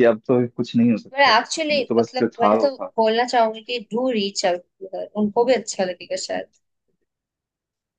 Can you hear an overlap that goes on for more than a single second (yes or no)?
yes